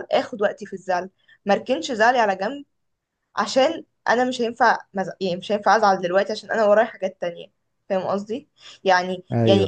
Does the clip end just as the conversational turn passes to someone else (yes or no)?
no